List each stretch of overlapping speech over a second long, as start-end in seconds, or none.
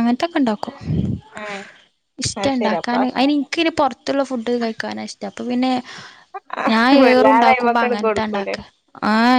7.0-8.6